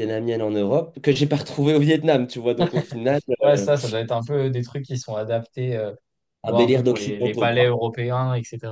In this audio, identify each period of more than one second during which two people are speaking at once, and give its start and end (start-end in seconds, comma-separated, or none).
6.5-7.8